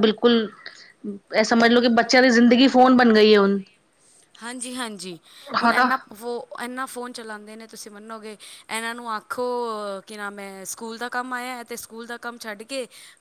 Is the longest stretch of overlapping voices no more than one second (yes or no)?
yes